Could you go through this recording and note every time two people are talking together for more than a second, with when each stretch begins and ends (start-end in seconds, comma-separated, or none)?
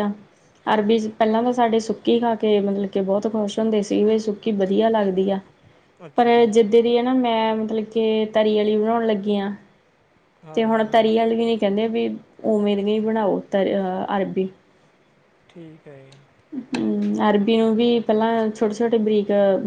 none